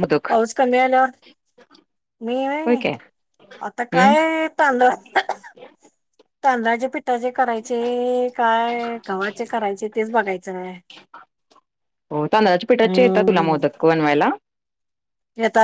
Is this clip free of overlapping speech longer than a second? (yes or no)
yes